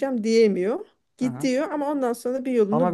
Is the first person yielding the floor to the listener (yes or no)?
yes